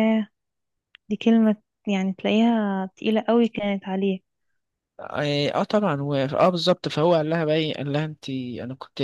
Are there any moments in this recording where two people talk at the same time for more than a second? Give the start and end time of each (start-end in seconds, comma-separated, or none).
none